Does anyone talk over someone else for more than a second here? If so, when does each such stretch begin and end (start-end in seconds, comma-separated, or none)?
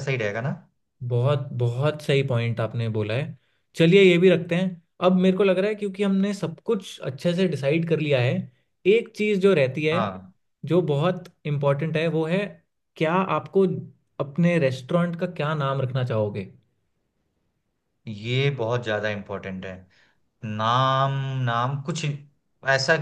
none